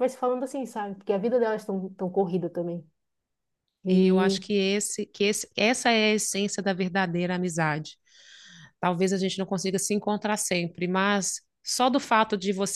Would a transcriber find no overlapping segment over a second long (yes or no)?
yes